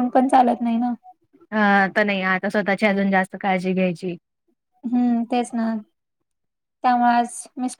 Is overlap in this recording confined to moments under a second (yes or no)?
yes